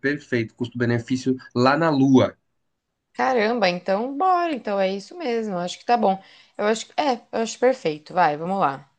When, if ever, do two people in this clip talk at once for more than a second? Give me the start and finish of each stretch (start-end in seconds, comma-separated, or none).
none